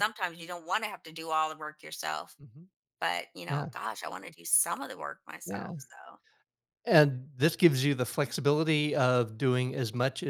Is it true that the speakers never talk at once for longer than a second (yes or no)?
yes